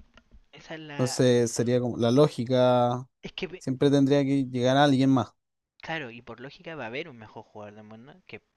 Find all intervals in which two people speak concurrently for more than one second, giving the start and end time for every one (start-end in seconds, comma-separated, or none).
none